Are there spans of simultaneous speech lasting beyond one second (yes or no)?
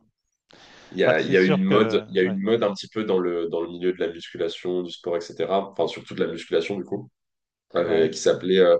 yes